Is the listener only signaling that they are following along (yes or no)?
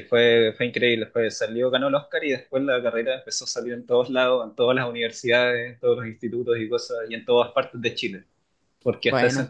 yes